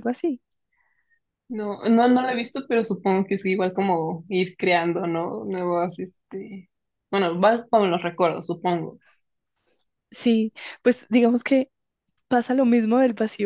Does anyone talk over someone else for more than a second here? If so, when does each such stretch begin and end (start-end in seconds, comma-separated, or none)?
none